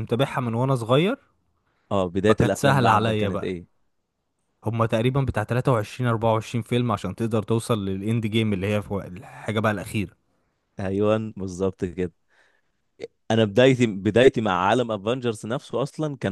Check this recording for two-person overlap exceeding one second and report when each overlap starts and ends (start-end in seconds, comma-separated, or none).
2.3-3.5